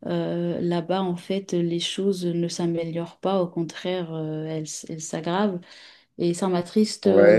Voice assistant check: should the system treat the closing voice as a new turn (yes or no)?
yes